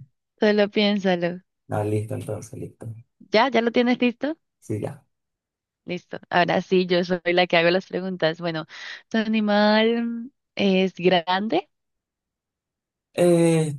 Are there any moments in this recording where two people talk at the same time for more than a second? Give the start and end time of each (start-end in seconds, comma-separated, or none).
none